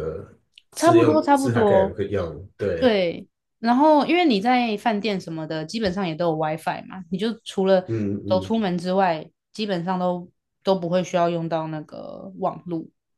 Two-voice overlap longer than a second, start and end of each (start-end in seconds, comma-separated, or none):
0.8-2.0